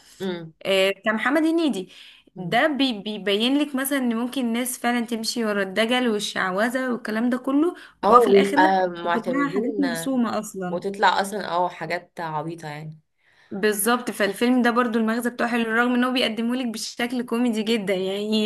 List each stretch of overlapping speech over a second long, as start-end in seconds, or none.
8.0-9.8